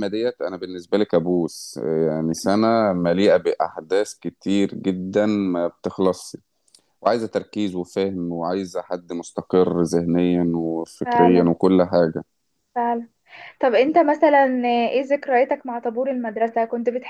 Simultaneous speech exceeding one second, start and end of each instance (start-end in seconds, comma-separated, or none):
none